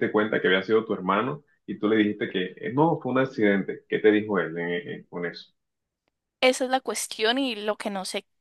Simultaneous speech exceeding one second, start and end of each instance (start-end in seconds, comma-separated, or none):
none